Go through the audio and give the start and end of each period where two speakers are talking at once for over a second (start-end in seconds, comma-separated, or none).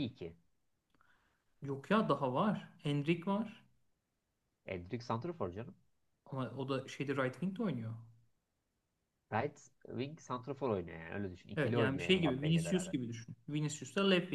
11.6-12.9